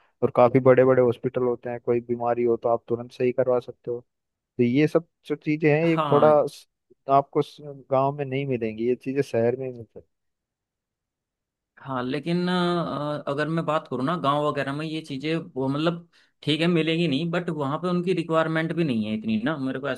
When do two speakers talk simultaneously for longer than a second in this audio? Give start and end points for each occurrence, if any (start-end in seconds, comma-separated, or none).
none